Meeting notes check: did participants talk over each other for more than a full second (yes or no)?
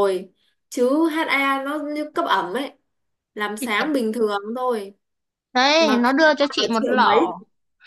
yes